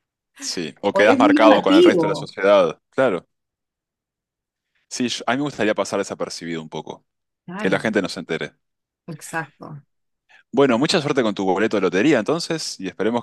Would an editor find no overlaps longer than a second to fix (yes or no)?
no